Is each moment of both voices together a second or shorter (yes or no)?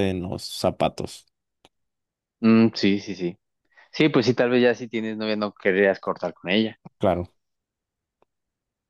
yes